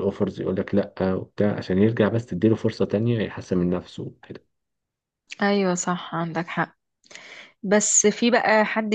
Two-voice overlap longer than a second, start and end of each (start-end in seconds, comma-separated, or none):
none